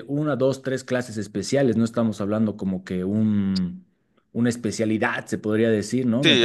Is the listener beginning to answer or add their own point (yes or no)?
yes